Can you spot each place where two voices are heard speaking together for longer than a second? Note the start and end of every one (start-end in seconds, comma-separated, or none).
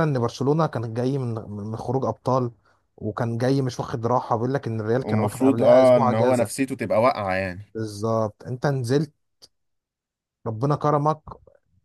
5.0-6.7